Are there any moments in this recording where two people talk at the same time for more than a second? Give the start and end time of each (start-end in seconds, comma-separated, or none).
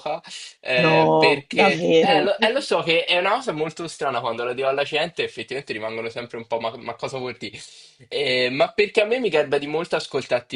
0.7-2.3